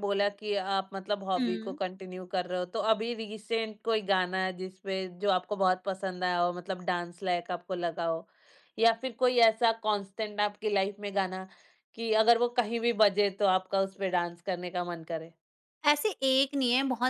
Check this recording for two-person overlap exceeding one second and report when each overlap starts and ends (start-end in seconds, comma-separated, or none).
none